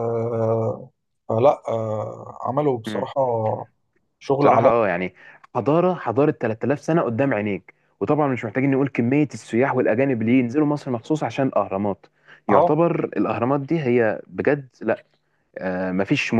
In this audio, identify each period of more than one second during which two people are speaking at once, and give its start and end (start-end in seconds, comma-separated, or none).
none